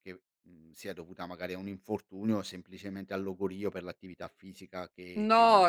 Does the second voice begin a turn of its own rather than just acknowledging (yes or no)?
yes